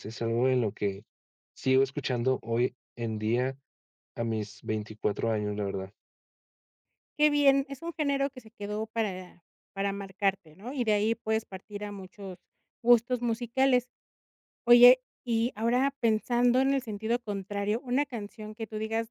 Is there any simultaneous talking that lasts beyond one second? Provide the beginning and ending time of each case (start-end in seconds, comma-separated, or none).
none